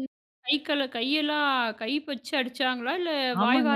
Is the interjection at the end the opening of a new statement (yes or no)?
yes